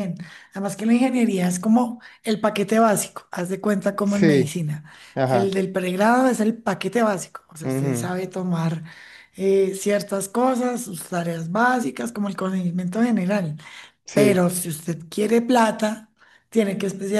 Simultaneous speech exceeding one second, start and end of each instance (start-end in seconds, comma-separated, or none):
none